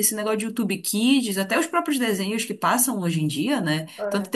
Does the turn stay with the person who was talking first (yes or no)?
yes